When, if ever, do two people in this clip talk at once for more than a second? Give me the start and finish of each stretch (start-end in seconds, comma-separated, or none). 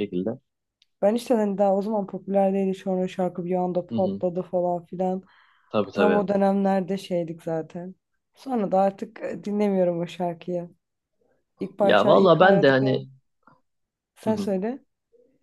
11.8-13.1